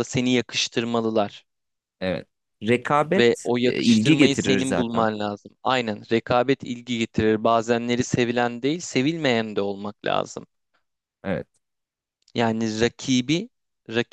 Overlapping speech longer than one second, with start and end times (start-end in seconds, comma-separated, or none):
3.2-5.1